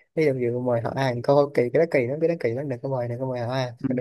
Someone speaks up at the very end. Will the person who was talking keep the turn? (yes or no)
no